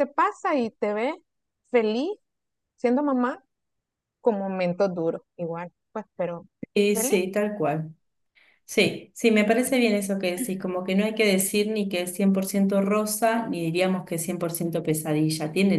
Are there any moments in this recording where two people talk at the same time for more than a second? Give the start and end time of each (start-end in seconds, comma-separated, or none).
none